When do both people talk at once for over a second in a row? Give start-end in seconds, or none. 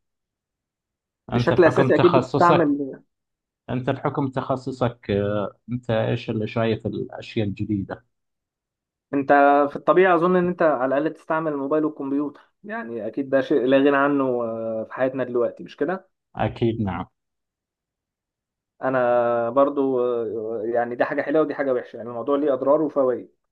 1.3-2.7